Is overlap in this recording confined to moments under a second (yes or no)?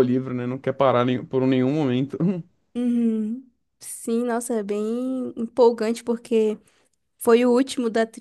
yes